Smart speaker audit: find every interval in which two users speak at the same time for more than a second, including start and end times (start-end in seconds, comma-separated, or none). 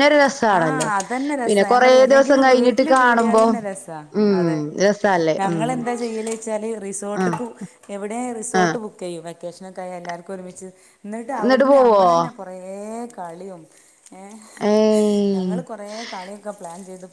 1.5-3.4